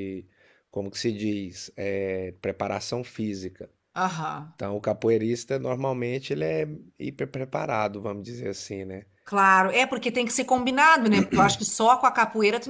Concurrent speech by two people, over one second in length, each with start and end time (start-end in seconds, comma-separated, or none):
none